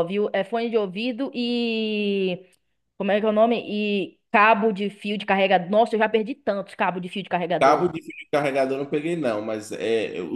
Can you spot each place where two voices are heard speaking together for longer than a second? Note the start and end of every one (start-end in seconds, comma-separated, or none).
none